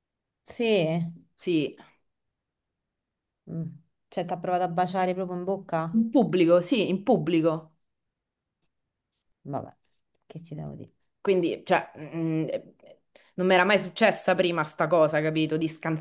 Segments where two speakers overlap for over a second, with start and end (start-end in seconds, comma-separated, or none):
none